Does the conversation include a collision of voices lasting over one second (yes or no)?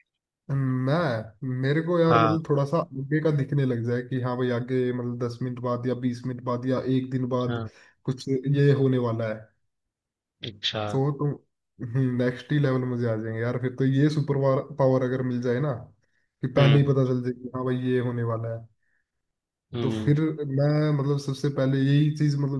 no